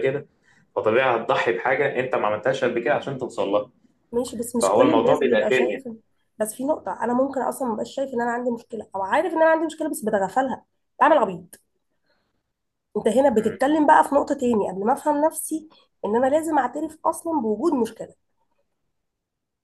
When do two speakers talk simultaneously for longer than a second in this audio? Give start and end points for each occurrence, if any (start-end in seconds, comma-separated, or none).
4.6-5.8